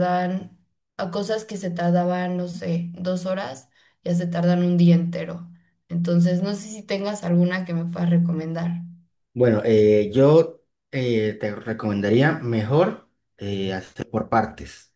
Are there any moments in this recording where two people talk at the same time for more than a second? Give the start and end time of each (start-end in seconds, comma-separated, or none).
none